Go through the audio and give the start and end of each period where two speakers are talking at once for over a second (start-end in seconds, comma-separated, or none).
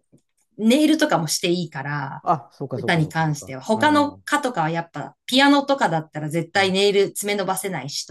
2.7-4.2